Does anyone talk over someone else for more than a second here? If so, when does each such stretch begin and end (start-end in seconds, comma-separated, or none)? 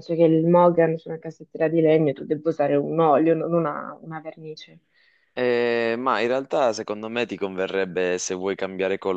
none